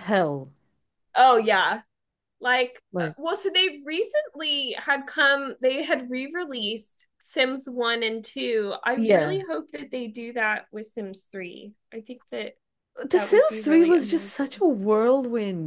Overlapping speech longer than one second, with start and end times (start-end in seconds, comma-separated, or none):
13.1-14.6